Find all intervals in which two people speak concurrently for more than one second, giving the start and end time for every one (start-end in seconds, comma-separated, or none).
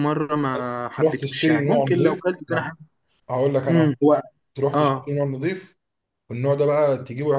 1.0-2.7